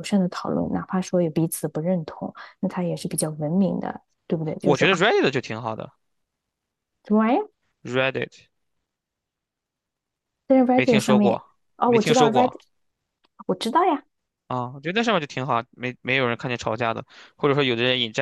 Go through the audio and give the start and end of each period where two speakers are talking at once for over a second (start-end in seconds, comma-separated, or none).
10.7-12.6